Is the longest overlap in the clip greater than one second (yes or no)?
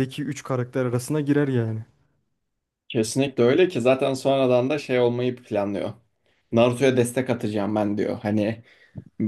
no